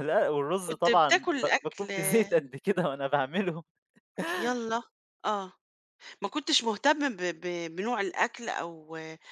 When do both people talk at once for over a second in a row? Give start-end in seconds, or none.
0.7-1.9